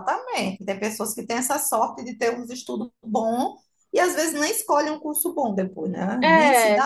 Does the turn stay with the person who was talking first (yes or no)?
yes